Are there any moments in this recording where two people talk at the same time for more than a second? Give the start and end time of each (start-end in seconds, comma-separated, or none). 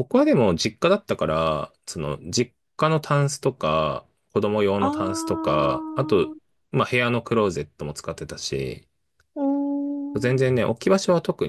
4.8-6.3